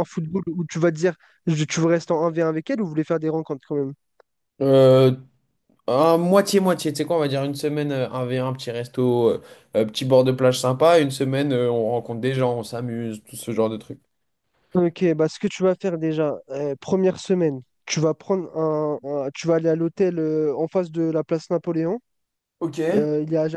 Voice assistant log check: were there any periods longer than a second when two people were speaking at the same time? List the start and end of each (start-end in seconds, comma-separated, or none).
none